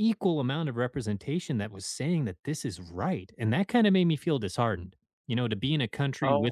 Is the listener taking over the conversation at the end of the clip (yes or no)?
no